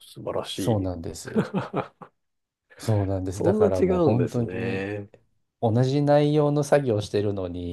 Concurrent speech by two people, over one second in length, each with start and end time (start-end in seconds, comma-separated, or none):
3.3-4.9